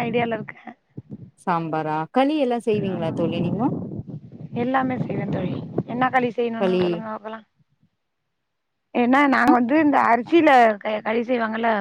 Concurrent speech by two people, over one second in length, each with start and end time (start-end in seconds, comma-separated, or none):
none